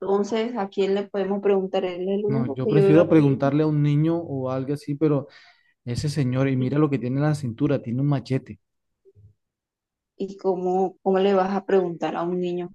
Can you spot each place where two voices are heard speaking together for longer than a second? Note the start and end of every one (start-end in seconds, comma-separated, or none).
2.2-3.5